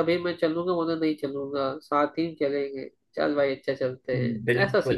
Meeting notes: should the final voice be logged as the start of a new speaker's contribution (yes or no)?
yes